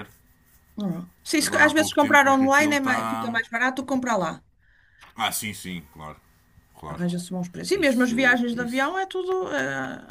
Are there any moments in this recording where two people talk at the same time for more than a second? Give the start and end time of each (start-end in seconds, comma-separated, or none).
1.4-3.4, 7.7-8.9